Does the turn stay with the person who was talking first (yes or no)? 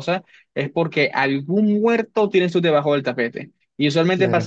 yes